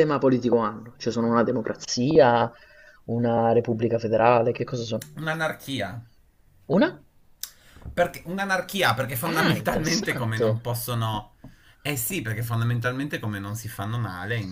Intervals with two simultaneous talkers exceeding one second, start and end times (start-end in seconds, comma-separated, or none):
9.2-10.6